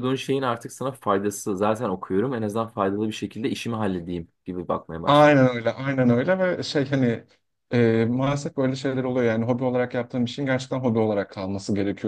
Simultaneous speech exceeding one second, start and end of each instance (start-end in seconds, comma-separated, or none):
none